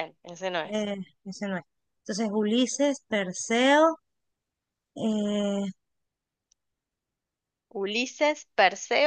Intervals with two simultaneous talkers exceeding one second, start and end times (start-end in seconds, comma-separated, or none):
none